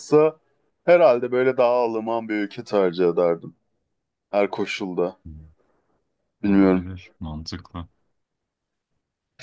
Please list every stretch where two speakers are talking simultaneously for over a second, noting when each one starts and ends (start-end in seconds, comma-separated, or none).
none